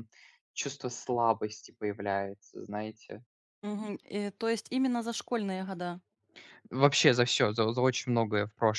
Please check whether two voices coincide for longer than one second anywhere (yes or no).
no